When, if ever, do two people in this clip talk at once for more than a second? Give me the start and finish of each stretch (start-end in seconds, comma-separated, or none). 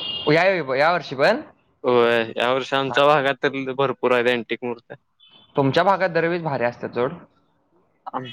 none